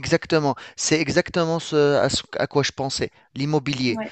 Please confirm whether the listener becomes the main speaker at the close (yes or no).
no